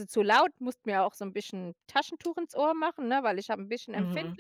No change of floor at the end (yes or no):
no